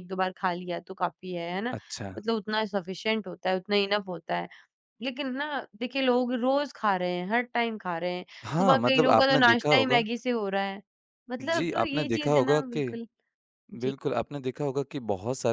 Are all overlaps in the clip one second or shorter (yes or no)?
no